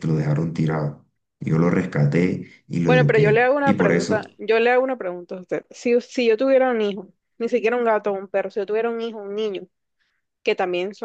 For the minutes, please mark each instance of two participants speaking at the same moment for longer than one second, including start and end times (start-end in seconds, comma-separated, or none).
2.8-4.2